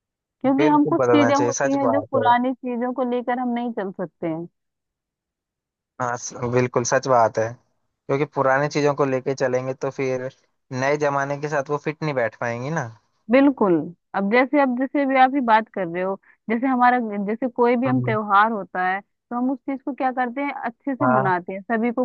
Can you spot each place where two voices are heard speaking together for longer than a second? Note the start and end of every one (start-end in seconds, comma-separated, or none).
0.6-2.2